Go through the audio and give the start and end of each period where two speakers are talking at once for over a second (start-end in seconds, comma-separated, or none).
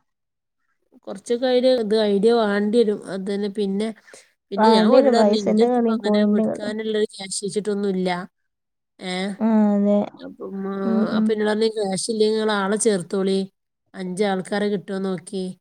4.6-6.7